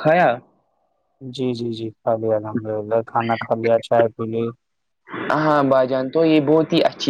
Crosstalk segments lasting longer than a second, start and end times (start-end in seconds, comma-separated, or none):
none